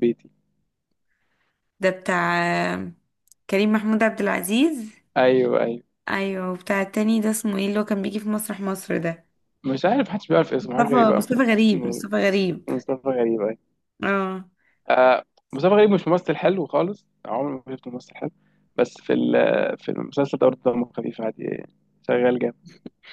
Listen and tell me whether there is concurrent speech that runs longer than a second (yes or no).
yes